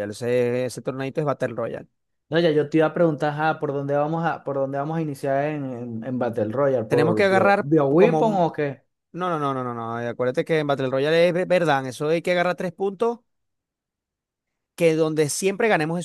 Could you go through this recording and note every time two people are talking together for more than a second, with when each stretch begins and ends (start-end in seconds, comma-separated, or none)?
6.9-8.5